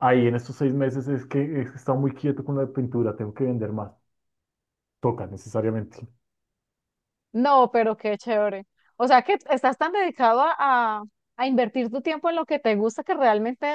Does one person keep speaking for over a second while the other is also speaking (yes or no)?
no